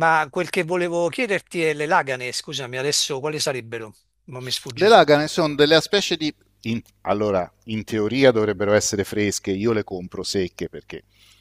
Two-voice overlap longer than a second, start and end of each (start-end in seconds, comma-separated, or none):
none